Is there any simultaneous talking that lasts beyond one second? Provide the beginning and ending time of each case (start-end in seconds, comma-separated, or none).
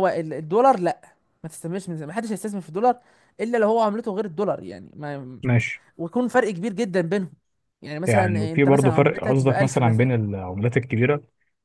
8.1-10.1